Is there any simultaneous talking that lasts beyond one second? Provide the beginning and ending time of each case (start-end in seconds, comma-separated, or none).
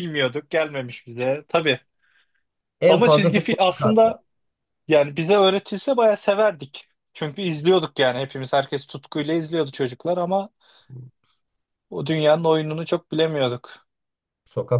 2.9-4.2